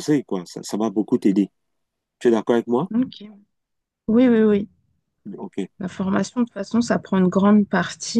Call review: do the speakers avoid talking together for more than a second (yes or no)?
yes